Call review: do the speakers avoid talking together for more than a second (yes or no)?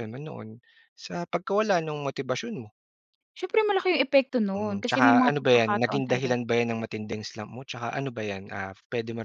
no